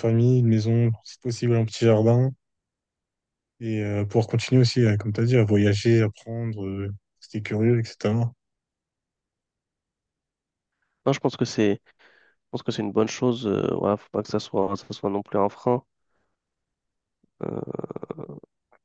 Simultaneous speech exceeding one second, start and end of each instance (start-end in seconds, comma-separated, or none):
none